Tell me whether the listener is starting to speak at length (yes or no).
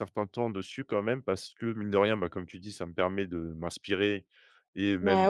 no